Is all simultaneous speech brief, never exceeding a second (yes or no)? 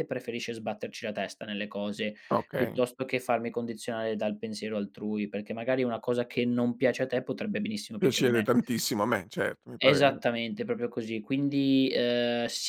yes